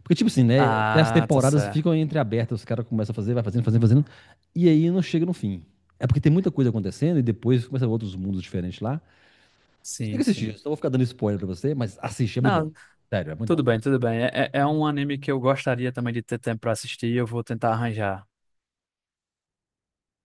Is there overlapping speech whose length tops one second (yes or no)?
yes